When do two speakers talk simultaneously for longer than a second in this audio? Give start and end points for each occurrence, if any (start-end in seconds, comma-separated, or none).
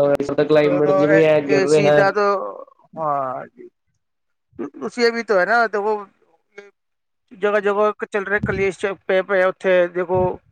0.6-2.0